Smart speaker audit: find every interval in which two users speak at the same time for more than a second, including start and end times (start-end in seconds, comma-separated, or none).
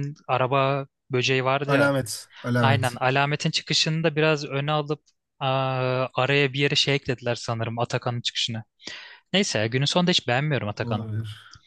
none